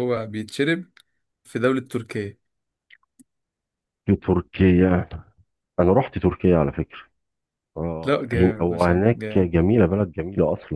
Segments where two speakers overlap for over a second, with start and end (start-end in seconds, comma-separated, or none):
8.0-9.5